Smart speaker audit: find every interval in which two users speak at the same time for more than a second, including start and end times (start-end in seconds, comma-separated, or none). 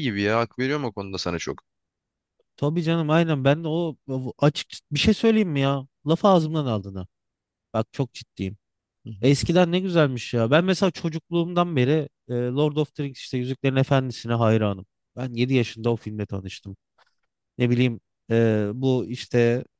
none